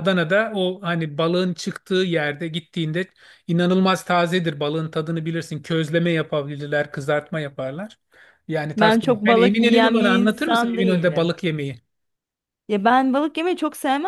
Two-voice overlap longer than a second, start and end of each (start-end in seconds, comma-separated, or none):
8.8-11.3